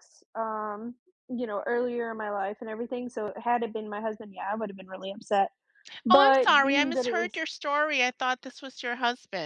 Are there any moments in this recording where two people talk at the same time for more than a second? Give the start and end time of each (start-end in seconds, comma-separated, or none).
6.1-7.4